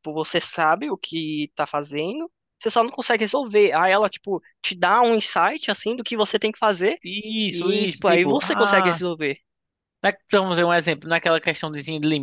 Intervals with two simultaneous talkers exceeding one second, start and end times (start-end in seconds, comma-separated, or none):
7.5-9.0